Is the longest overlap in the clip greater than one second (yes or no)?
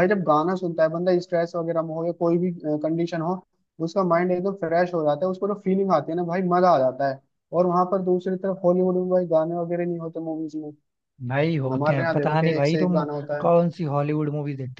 yes